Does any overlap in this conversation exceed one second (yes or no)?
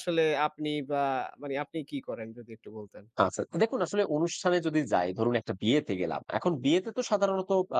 no